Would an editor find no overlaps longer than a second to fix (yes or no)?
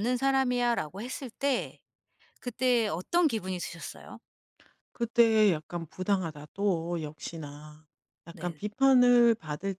yes